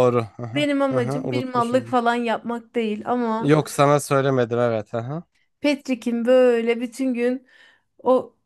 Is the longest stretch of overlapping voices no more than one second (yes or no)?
no